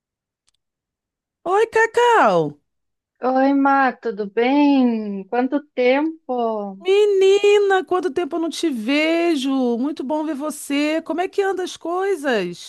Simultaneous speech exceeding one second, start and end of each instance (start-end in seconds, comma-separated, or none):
none